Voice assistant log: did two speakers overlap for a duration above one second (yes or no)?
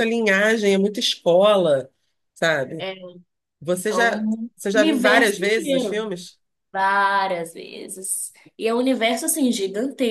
yes